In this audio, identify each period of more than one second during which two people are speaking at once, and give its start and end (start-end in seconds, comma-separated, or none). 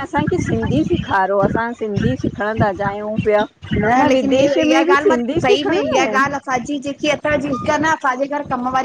4.0-6.2